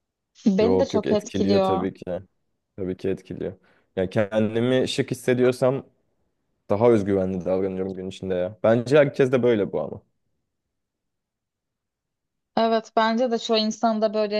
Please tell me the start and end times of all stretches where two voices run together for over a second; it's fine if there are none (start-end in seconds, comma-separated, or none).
0.6-1.9